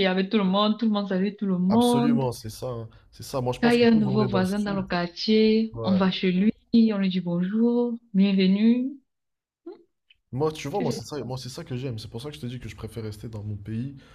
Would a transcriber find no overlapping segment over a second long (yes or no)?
no